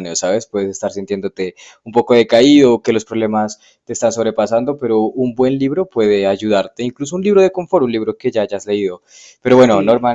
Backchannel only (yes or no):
yes